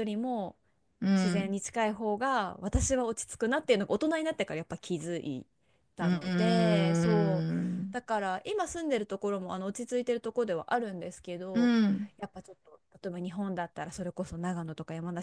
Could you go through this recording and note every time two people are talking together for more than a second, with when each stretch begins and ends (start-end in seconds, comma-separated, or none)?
6.0-8.0